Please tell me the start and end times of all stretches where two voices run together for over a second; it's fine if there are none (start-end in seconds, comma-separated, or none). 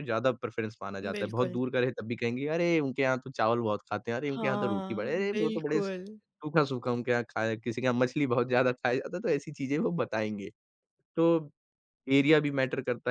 4.3-5.8